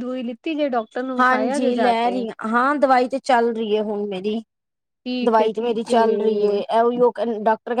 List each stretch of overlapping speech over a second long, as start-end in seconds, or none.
5.2-6.6